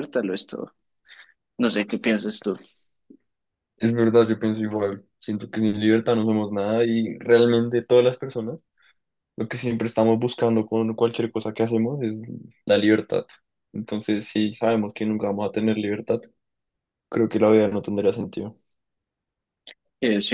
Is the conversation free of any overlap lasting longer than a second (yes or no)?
yes